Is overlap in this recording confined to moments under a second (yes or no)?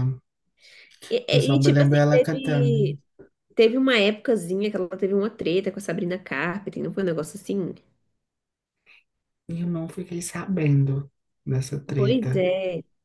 no